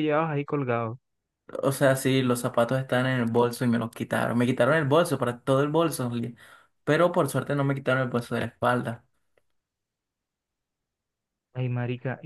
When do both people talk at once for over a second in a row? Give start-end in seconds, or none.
none